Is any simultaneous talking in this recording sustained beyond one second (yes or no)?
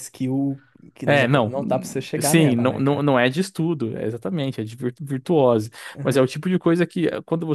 yes